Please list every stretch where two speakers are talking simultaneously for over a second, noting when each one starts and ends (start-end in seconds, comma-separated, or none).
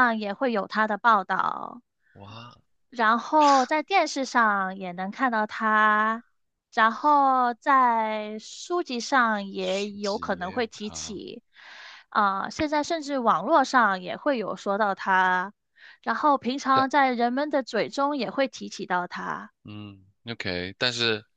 9.6-11.2